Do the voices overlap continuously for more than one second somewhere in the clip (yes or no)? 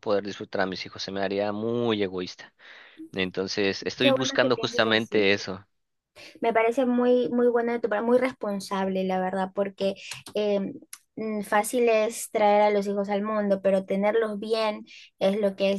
yes